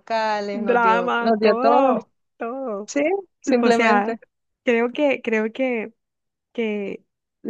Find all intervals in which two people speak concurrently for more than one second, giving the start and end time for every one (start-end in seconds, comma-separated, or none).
0.5-1.9